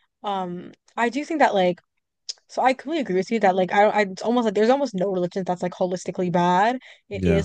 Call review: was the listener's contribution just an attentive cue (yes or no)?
yes